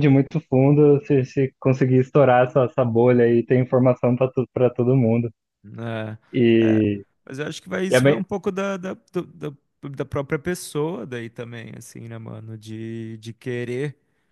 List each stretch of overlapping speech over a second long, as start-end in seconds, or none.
none